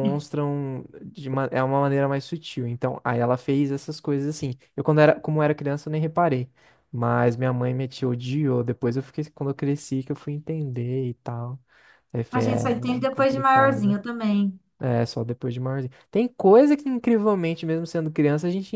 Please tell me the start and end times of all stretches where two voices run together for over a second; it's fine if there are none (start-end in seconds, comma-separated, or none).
12.3-14.0